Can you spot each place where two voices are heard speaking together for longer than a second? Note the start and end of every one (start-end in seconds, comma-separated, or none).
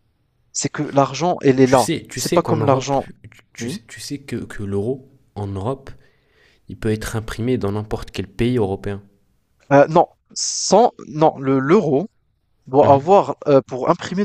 1.6-3.0